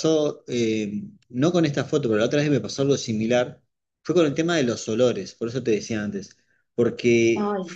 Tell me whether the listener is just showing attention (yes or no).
yes